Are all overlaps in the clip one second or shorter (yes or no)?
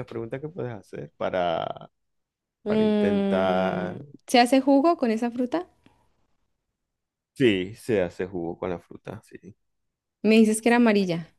no